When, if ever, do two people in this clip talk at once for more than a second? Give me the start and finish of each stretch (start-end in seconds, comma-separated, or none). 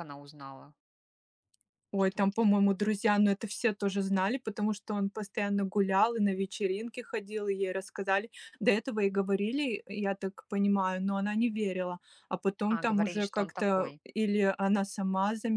12.7-14.0